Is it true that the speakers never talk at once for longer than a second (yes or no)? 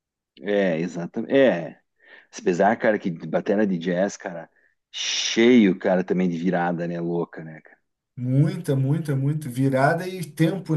yes